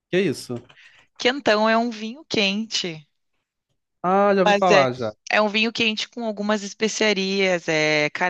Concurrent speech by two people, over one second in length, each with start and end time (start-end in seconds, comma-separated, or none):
none